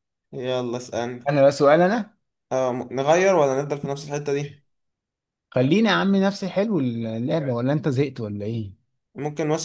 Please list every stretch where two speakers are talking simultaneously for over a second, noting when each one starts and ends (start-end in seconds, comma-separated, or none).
none